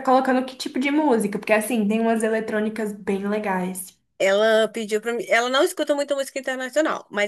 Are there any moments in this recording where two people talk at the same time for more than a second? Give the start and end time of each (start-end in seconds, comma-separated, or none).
none